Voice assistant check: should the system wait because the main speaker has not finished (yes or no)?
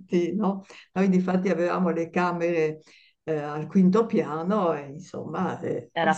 yes